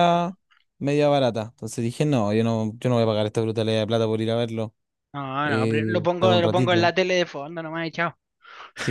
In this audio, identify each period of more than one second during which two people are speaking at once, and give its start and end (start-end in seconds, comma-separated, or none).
5.4-6.8